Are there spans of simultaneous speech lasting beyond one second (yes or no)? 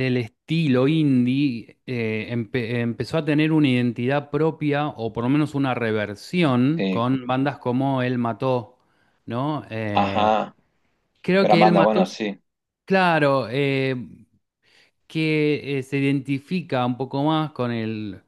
no